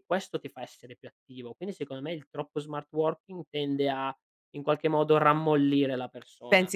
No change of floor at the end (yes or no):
no